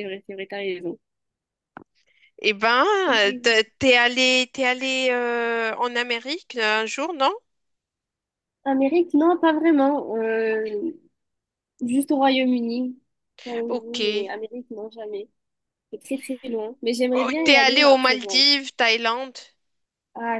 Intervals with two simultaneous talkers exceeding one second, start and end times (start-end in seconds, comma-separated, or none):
17.1-18.4